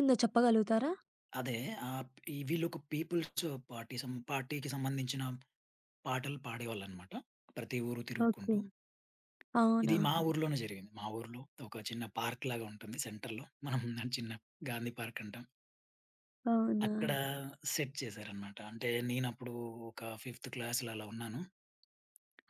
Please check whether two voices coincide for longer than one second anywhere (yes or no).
no